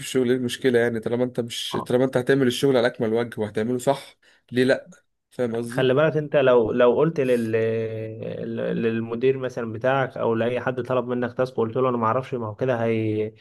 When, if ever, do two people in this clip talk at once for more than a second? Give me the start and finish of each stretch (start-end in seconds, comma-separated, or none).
none